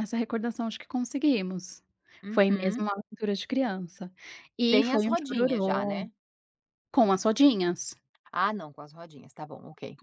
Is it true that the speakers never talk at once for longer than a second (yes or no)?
no